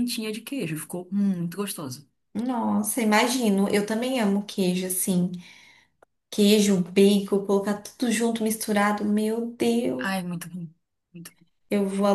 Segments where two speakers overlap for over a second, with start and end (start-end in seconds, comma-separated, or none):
none